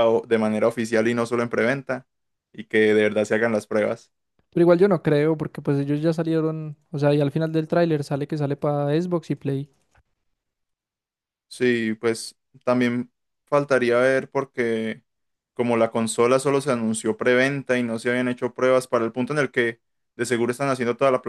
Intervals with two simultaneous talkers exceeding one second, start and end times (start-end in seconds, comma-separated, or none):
none